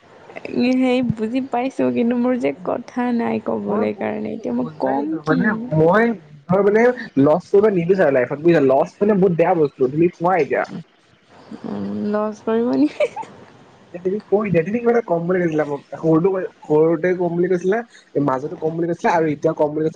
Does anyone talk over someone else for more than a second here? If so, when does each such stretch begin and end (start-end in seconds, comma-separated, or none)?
3.7-5.4